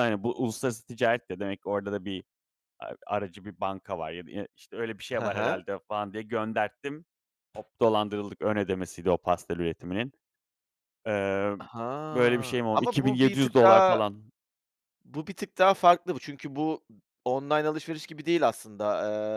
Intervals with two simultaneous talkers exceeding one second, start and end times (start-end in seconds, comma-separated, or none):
12.1-14.0